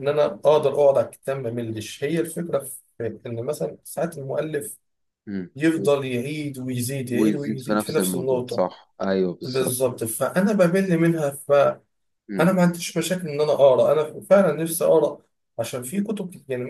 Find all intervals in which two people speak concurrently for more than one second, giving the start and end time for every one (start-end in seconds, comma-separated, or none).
7.1-8.7